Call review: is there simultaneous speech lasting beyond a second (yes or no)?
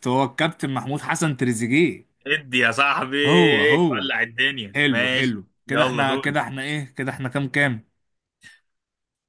yes